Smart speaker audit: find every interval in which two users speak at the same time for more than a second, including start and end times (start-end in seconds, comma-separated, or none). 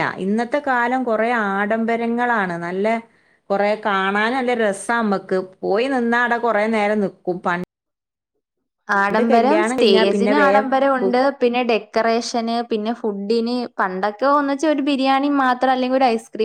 9.3-11.2